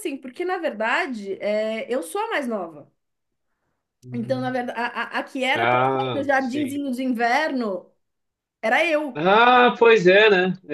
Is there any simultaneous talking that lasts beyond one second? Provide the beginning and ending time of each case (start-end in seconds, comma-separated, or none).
5.5-6.8